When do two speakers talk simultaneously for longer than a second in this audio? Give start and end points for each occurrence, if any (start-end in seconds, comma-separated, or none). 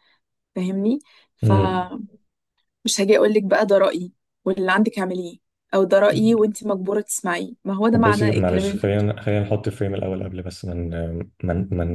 7.9-9.2